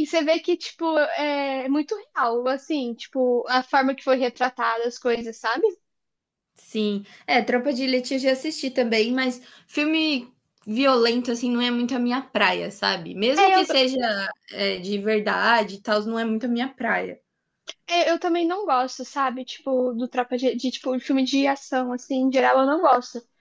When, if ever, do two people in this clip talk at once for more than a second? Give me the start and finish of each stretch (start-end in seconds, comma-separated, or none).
none